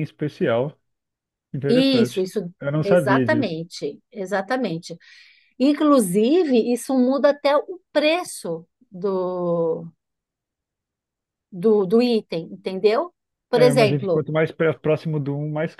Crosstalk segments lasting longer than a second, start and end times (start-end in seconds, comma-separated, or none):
1.7-3.6